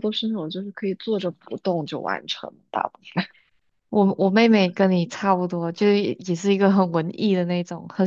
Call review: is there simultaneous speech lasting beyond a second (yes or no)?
no